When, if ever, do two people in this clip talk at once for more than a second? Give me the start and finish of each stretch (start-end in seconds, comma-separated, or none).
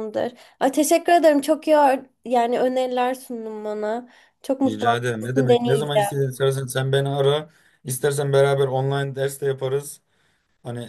4.7-6.1